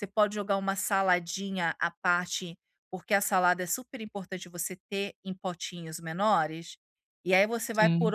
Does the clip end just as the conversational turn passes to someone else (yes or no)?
no